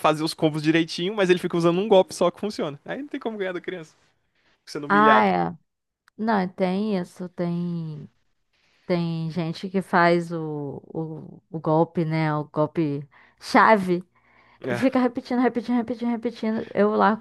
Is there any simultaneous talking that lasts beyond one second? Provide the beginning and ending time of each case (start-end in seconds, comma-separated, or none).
none